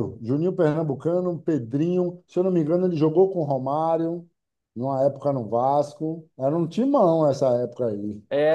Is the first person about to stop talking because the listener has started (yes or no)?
yes